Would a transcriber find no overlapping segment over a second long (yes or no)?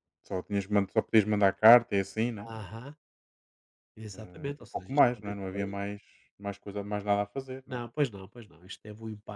no